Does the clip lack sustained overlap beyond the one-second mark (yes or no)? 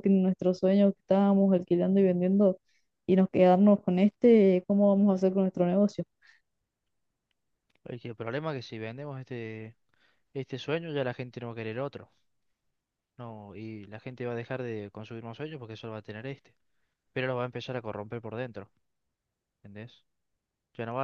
yes